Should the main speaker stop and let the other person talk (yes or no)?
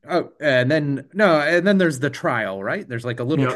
yes